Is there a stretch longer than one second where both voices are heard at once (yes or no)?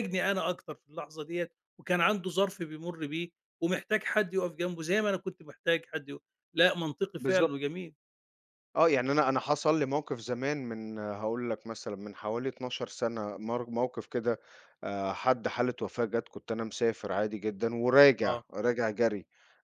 no